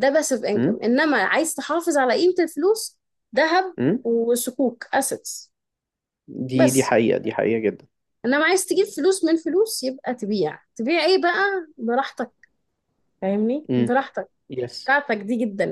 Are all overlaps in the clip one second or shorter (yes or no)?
yes